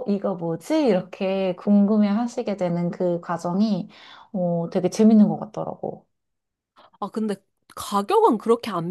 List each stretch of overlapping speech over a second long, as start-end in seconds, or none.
none